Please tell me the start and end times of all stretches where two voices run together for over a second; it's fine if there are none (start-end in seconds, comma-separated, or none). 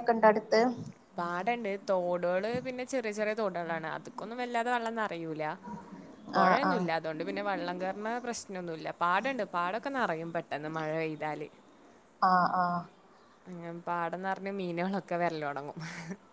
none